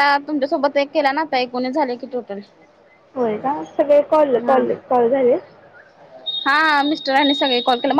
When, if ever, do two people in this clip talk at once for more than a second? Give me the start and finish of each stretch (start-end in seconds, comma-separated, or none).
none